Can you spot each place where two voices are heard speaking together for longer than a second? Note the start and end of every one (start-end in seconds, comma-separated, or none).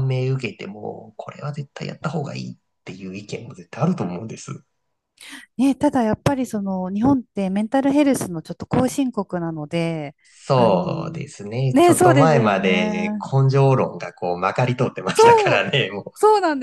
11.7-13.2